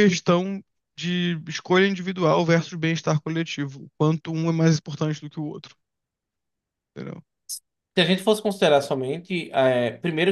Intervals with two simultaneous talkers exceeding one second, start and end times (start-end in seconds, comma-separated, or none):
none